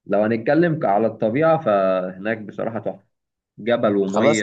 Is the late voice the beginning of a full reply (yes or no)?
no